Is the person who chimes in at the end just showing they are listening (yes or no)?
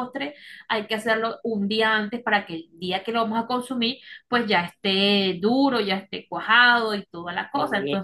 no